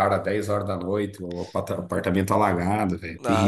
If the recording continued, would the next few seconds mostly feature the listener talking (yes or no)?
yes